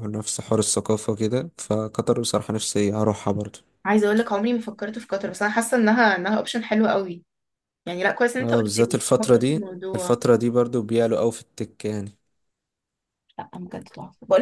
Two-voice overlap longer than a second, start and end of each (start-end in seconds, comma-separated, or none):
8.4-10.2